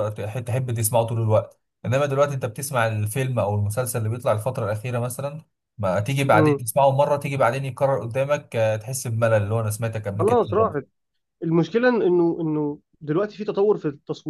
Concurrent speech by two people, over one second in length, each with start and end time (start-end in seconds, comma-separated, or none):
none